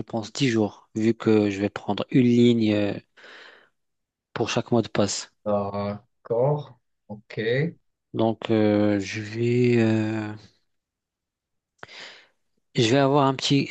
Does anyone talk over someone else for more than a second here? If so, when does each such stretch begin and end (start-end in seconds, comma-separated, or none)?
none